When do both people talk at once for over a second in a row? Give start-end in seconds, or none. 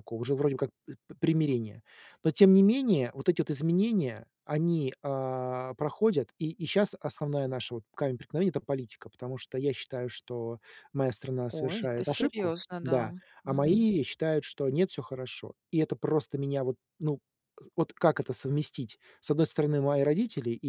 11.5-13.9